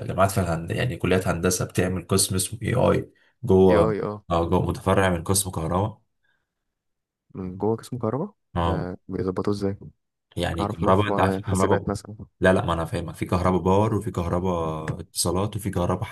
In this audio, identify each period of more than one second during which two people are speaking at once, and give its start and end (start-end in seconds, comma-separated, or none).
10.6-11.9